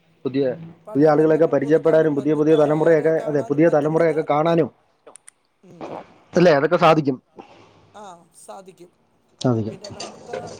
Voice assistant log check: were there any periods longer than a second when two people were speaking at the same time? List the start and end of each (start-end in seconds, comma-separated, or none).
0.9-4.6